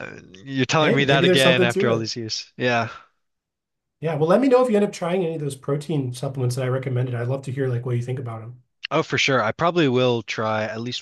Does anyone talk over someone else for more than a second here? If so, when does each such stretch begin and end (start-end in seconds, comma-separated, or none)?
0.8-2.1